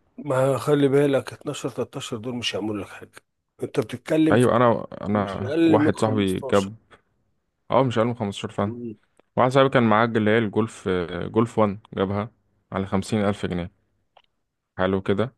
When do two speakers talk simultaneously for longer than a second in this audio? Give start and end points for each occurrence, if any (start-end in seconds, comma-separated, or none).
5.1-6.7